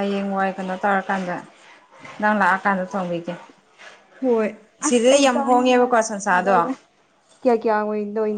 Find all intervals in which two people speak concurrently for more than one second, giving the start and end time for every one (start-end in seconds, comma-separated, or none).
4.9-6.5